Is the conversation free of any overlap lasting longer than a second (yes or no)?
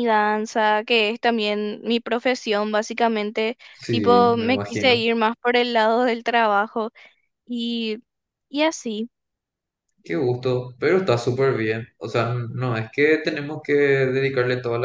no